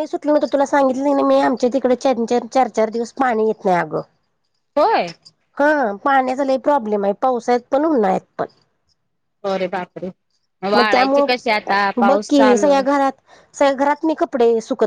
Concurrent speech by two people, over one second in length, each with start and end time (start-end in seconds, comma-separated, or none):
10.8-12.7